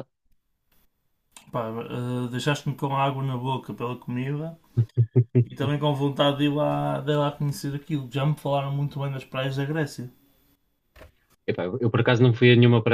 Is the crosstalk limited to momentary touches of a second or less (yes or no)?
yes